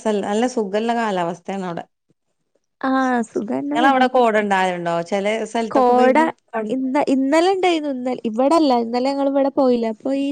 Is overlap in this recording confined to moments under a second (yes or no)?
yes